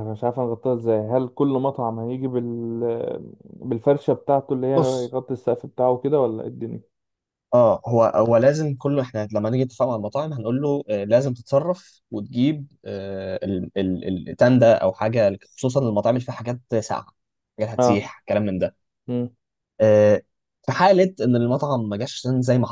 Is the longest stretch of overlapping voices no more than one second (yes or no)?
yes